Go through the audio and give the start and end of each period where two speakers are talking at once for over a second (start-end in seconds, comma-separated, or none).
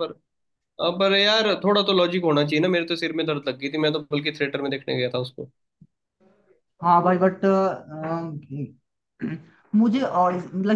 none